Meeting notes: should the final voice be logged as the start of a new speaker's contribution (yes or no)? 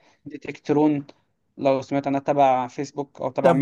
yes